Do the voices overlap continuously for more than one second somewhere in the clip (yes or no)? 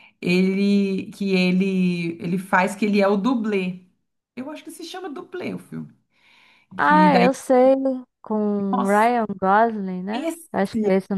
no